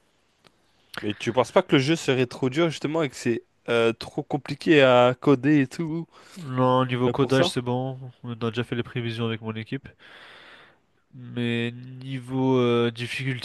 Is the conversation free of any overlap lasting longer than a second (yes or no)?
yes